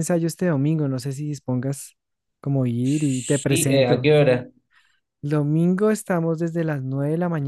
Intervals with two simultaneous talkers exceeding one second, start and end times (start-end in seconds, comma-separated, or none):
2.8-4.2